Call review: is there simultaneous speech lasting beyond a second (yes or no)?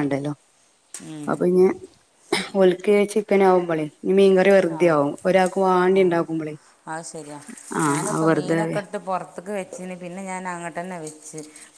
no